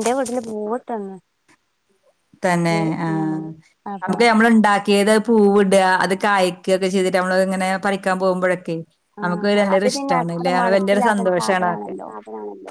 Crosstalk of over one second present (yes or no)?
yes